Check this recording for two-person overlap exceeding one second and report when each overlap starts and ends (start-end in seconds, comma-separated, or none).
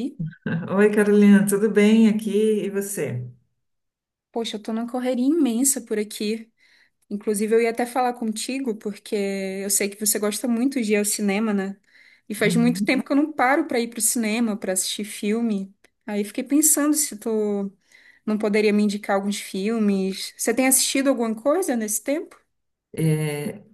none